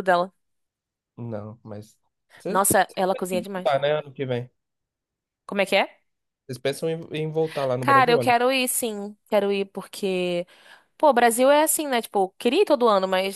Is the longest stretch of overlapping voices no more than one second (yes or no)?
no